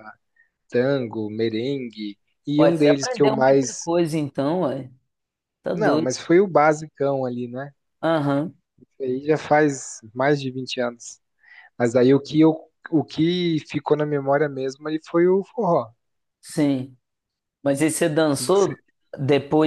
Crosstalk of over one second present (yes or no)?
yes